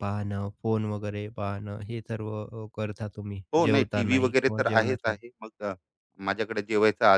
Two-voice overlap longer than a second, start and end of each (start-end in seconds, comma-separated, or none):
3.5-5.3